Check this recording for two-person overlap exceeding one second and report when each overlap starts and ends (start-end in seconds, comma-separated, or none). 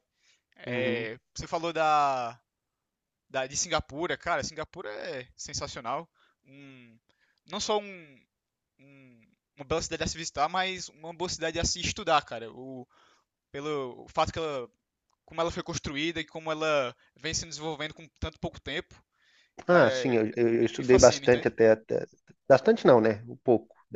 19.7-21.5